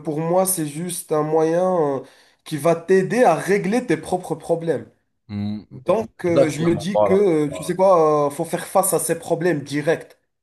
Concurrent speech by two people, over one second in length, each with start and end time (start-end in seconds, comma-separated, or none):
5.7-7.7